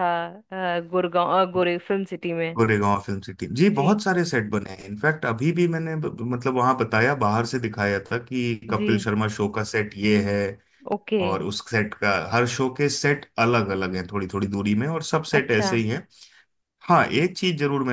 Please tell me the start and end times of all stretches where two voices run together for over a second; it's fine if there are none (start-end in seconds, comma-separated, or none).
none